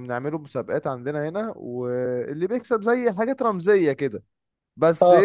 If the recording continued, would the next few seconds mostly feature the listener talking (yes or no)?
yes